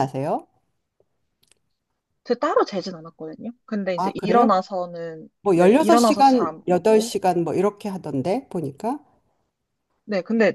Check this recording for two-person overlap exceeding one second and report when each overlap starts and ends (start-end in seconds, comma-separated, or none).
5.4-7.1